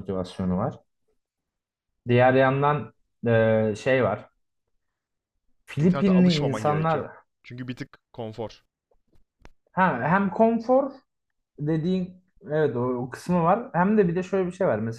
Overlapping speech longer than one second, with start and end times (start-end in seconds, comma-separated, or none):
5.8-7.1